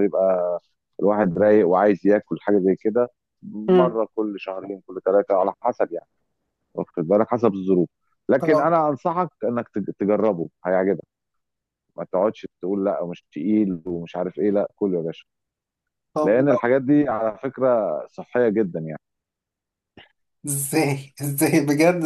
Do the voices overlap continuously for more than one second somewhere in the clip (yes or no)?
no